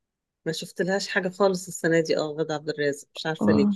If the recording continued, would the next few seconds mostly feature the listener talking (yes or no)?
no